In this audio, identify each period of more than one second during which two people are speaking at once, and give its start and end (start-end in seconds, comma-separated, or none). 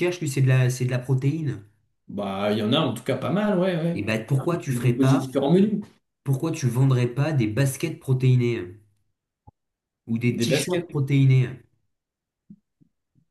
3.9-5.3